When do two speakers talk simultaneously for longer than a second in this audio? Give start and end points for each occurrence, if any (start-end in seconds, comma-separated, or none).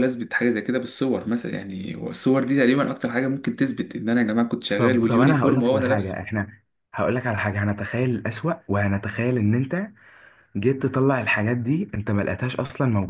4.8-6.2